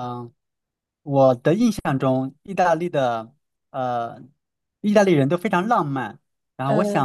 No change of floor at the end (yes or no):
yes